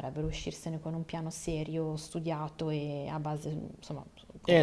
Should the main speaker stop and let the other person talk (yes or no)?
yes